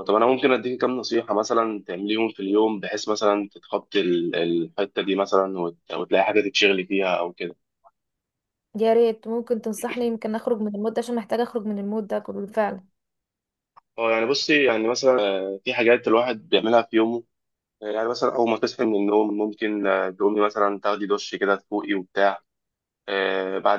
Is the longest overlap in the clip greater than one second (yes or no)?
no